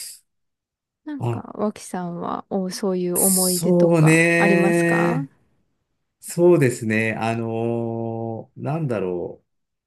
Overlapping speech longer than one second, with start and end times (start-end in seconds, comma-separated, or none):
3.2-5.3